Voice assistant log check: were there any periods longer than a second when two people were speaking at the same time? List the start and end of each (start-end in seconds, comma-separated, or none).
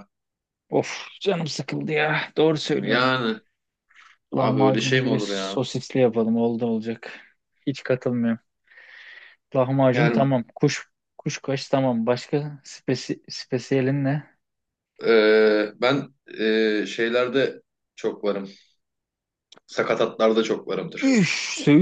4.3-5.6